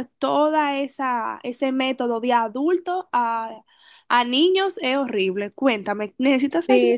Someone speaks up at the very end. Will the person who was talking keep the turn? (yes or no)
no